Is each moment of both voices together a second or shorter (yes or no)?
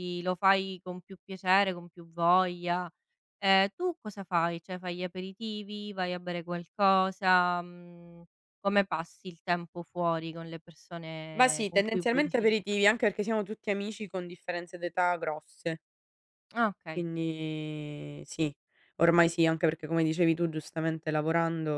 no